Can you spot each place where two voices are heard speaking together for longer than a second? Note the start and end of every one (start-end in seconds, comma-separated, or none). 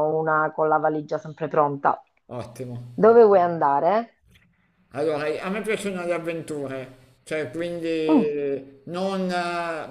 none